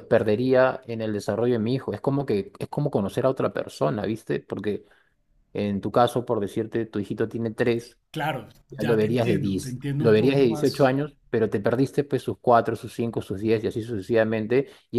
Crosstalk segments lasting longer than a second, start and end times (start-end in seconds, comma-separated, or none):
8.7-10.9